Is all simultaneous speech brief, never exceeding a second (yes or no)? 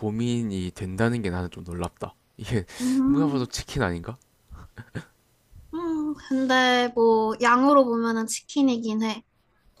yes